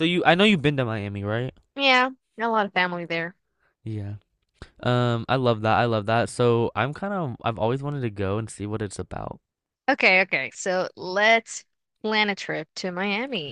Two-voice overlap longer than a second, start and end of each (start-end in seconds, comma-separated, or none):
none